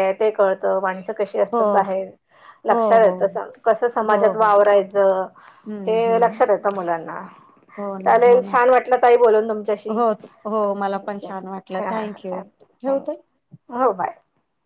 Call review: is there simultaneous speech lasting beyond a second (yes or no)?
yes